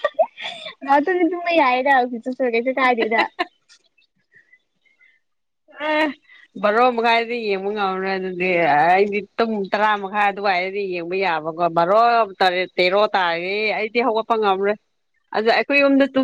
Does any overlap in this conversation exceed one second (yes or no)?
no